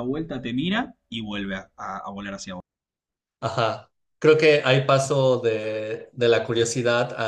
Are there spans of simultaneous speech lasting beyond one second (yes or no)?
no